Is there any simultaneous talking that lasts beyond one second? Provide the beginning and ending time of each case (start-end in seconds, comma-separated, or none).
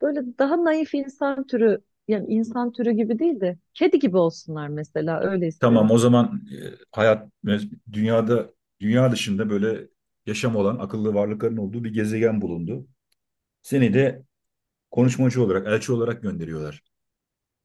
none